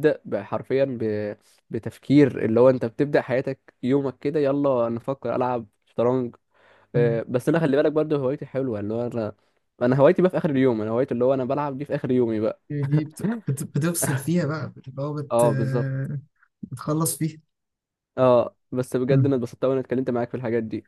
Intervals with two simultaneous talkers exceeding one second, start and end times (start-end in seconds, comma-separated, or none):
none